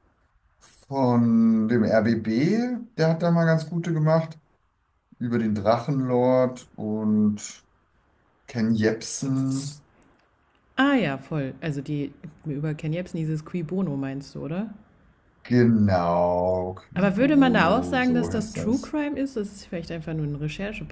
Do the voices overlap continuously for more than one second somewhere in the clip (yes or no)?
yes